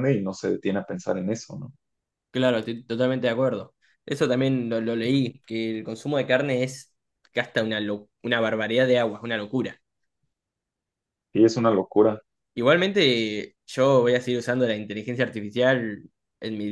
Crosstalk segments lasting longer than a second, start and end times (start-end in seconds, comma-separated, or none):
none